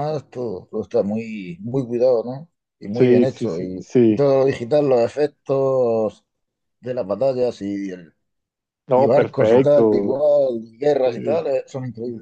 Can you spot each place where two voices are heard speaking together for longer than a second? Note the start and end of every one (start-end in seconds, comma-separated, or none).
2.9-4.2, 8.9-10.2